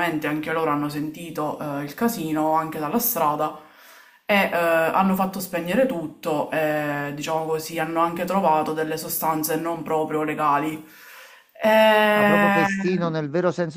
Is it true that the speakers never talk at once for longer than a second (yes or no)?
yes